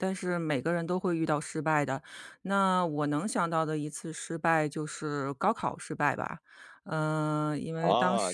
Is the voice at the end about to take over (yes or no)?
yes